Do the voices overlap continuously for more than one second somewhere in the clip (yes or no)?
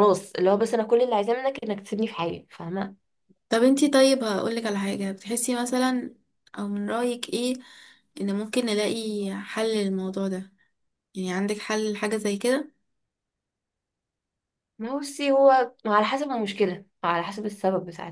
no